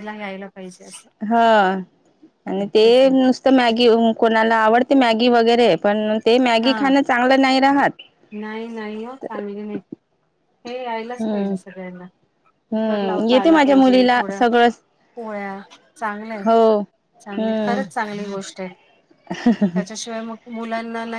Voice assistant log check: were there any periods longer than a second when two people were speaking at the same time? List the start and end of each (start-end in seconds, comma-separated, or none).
12.7-14.3